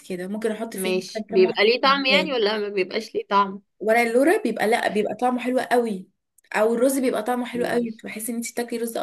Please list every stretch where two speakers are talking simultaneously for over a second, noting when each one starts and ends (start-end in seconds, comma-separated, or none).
0.7-2.3